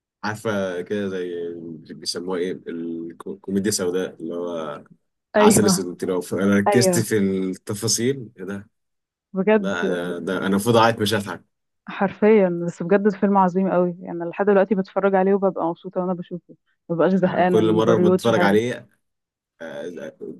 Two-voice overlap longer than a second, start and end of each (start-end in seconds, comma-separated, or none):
17.2-18.6